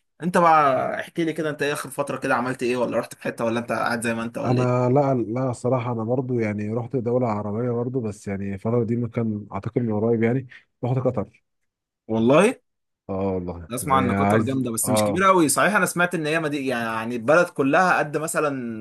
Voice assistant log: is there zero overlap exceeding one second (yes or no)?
no